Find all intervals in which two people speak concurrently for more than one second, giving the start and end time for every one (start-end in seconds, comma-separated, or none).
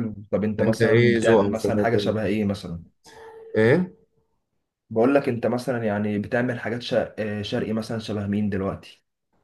0.6-2.2